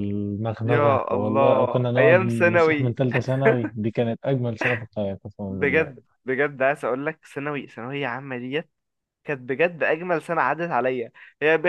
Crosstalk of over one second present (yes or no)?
yes